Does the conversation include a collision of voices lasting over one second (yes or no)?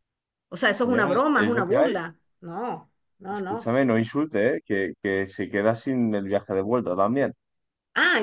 yes